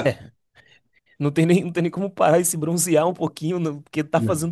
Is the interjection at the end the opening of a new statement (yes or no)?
no